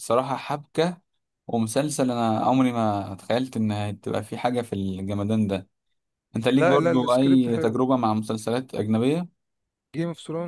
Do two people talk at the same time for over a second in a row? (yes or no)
yes